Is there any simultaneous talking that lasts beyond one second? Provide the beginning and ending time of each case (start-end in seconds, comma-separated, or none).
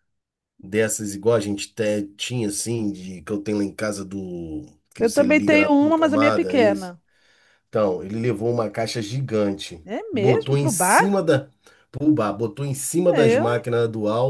5.0-6.9, 9.8-11.2